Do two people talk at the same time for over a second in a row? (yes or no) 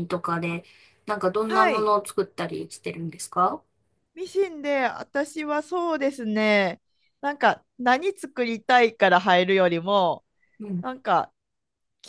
no